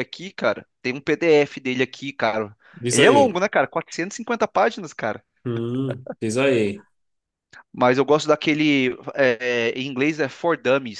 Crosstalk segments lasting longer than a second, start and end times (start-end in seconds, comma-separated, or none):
none